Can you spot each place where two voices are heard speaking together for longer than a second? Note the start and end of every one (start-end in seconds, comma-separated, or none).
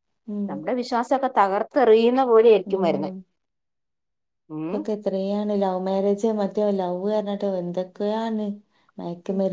none